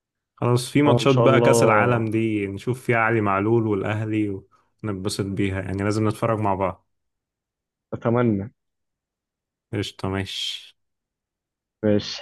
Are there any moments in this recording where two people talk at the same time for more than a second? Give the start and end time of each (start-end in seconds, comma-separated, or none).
0.8-2.1